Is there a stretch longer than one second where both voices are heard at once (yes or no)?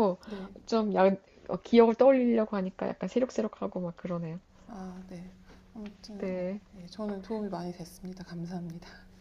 no